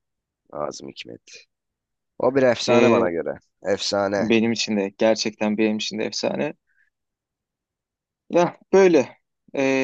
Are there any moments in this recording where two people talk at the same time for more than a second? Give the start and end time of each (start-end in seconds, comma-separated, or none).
none